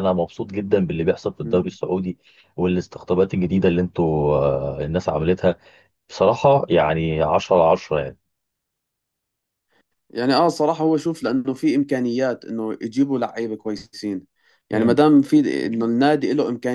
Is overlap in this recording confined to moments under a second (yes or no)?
yes